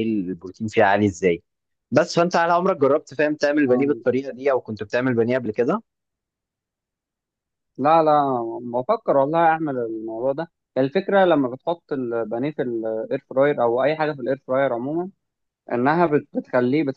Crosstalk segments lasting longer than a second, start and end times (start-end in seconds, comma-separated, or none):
none